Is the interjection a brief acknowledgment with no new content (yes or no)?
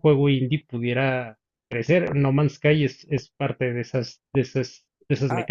no